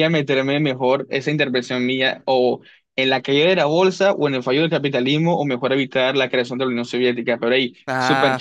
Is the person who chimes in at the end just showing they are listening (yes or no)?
yes